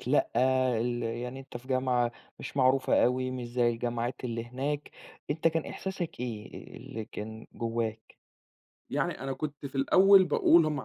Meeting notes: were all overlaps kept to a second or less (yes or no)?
yes